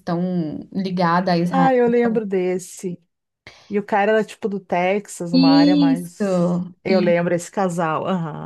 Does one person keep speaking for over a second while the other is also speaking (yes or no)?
yes